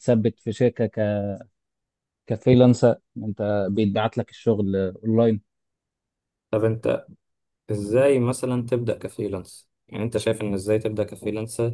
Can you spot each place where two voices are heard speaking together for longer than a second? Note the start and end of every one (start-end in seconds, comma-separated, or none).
none